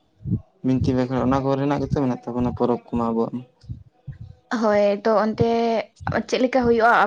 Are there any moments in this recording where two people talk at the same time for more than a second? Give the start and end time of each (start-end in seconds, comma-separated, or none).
none